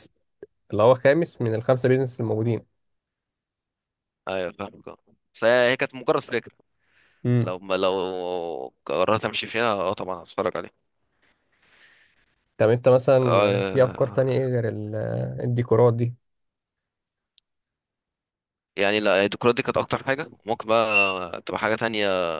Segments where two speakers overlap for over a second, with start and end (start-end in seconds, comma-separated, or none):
13.3-14.5